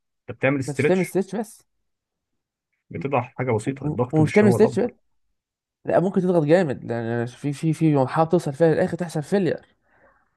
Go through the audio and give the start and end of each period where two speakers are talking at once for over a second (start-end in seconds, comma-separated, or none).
3.6-4.9